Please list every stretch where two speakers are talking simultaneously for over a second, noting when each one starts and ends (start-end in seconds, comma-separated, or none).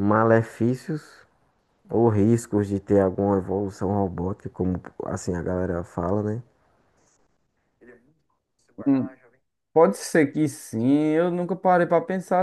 none